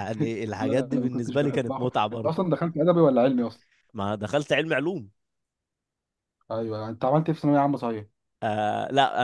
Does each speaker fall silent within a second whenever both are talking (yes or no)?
no